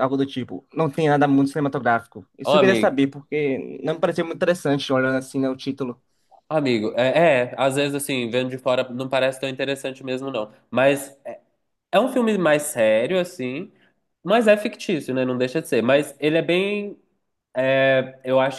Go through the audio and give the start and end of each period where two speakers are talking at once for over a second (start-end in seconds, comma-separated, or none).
none